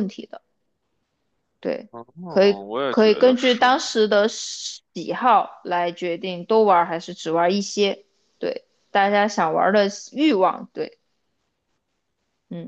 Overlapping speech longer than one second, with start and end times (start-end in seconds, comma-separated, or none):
2.3-3.8